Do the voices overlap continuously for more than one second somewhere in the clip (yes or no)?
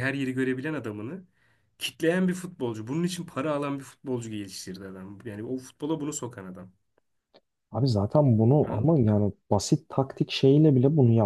no